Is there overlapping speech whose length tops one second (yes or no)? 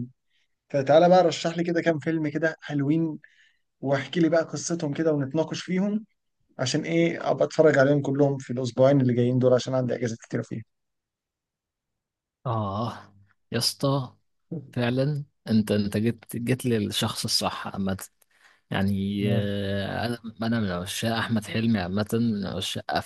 no